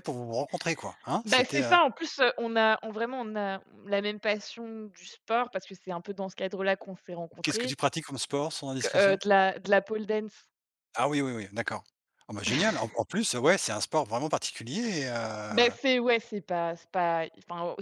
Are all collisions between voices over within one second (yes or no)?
yes